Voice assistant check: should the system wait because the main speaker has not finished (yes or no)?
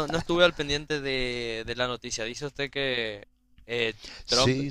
yes